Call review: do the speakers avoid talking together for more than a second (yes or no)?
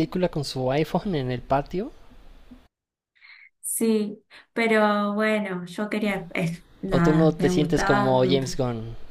no